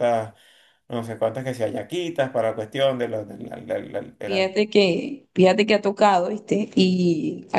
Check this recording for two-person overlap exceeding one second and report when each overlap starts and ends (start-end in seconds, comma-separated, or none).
none